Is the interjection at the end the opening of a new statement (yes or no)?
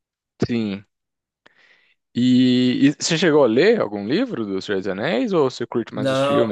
yes